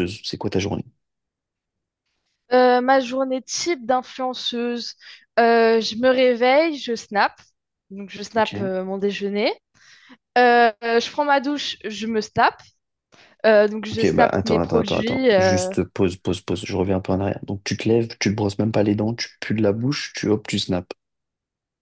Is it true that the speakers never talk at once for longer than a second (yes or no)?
no